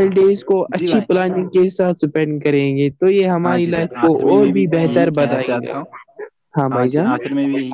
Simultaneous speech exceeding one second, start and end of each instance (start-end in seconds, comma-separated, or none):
3.4-5.7